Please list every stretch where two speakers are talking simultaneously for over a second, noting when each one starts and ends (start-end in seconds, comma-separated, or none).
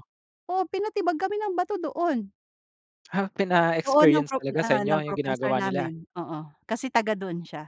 3.9-5.9